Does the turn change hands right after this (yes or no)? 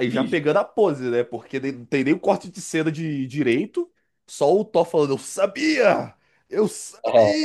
no